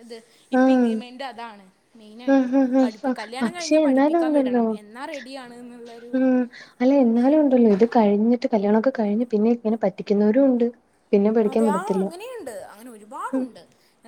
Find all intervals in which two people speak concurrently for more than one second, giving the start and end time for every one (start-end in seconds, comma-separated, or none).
2.3-4.6